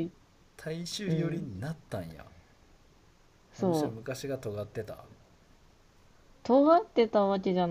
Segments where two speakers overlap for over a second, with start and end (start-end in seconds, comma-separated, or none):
none